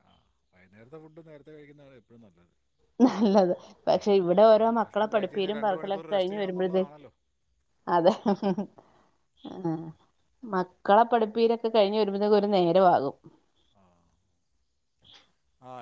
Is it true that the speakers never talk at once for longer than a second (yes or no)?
no